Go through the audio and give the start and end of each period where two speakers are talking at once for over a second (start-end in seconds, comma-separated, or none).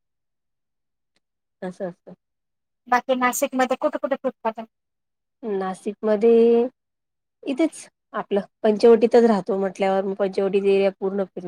none